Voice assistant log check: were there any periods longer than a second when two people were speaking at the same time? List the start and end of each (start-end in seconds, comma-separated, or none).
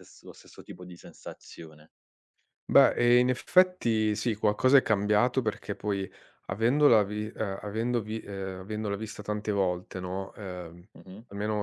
none